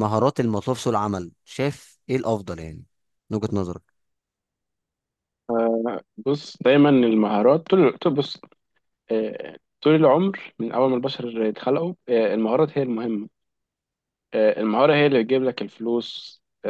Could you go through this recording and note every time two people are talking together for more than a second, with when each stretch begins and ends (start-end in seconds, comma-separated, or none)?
none